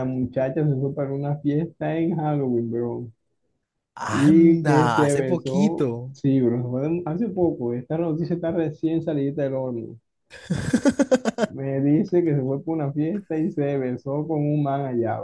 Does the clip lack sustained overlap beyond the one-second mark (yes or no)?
no